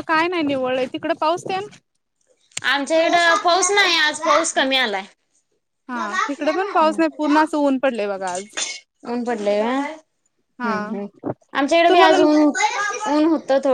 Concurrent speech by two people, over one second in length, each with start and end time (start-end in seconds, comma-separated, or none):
none